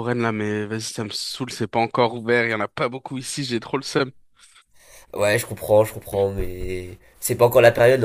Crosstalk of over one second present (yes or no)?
no